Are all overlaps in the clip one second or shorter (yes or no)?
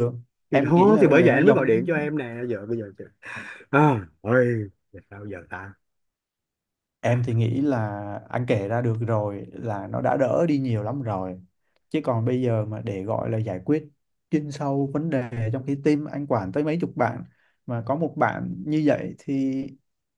no